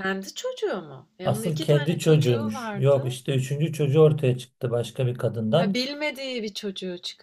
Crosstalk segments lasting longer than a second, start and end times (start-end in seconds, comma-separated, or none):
1.2-3.2